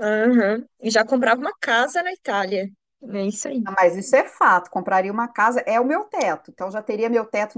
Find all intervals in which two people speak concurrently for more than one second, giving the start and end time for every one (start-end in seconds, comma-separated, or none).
none